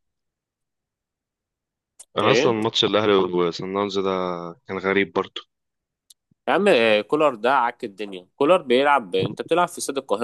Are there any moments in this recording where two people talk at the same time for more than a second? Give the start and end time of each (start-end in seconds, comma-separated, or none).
none